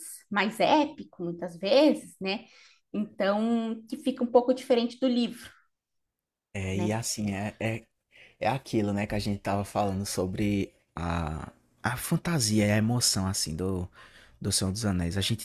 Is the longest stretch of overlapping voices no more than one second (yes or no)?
yes